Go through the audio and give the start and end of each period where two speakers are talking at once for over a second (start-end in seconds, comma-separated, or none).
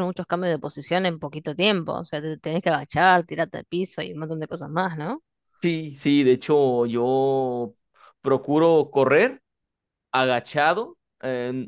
none